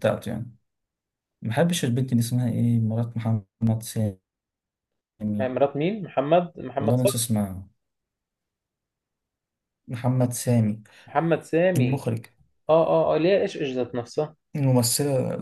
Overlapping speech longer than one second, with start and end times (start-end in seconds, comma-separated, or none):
none